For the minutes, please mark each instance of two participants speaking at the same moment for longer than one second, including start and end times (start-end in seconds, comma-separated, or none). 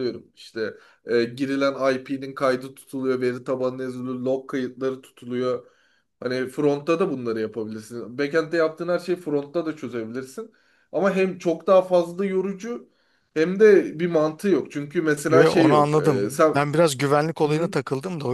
15.3-16.5